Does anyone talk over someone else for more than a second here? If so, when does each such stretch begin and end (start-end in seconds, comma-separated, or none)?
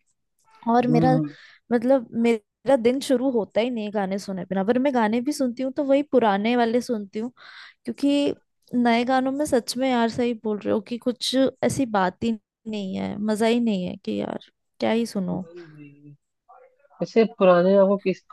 none